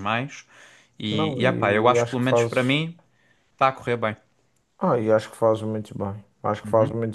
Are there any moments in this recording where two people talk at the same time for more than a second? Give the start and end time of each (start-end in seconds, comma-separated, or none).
1.1-2.8